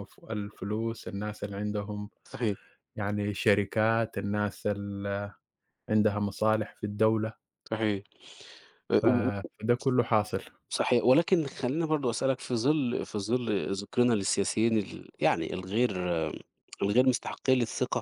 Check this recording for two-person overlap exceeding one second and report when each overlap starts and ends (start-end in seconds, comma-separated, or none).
none